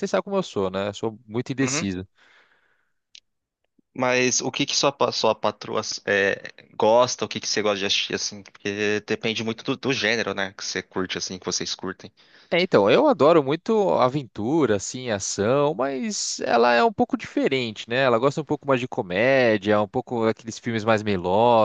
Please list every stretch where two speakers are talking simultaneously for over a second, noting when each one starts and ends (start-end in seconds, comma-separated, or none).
none